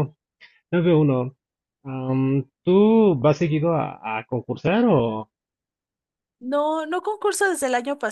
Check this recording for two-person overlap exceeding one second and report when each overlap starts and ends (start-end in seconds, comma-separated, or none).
none